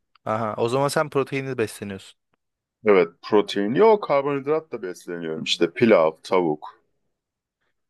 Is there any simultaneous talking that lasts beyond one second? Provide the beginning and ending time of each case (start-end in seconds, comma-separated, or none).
none